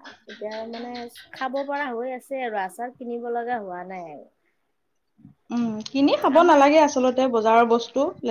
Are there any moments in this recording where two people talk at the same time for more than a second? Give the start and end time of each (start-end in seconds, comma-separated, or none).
none